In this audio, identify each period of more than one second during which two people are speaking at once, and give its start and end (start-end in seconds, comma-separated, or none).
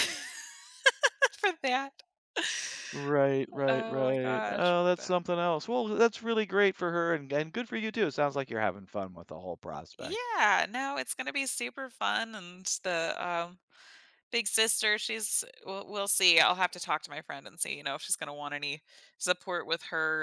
3.7-5.1